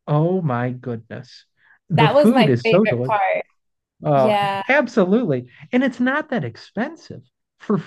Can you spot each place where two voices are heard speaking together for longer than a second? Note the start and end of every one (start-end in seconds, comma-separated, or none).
2.0-3.2